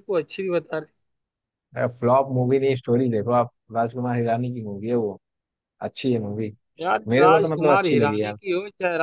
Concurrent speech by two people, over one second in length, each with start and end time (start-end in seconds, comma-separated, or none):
7.1-8.4